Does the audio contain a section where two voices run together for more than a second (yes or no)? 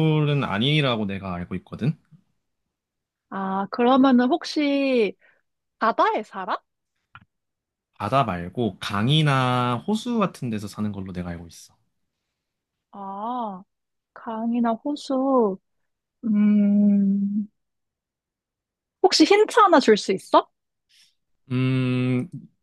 no